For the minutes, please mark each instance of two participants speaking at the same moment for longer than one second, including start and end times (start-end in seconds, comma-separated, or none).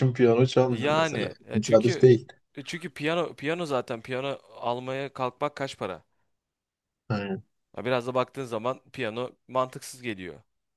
0.7-2.1